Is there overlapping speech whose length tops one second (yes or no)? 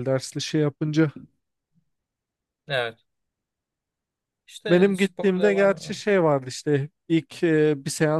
yes